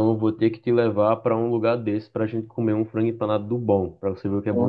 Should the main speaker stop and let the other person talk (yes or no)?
yes